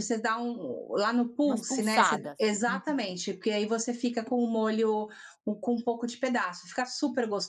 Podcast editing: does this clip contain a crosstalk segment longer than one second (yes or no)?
yes